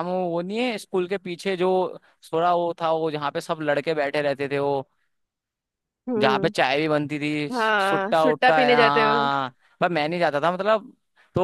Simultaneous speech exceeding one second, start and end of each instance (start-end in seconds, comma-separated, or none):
7.5-9.3